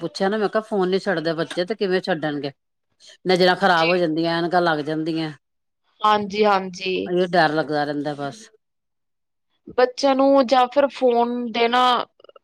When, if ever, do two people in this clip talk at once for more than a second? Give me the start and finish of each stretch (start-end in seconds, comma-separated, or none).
none